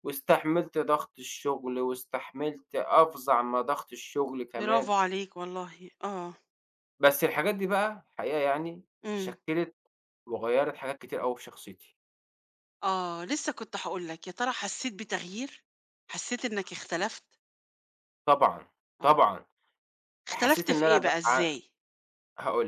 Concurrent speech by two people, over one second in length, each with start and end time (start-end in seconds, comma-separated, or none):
20.3-21.5